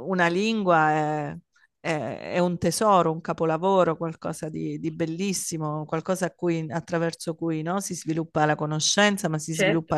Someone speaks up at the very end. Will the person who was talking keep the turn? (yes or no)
yes